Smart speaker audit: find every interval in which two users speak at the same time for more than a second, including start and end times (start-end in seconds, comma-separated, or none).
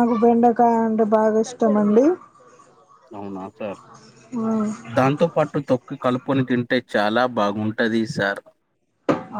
none